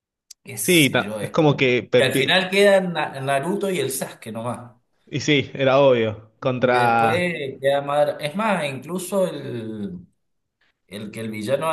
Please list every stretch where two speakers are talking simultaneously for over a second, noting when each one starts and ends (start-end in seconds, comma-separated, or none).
0.6-2.3